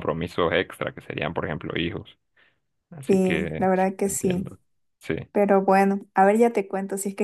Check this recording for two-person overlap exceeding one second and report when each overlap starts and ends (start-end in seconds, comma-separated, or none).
3.1-4.6